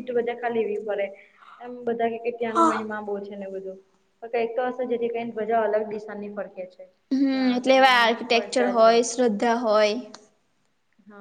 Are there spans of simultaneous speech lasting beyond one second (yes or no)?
yes